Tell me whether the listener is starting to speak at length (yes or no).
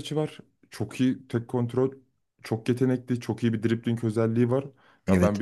no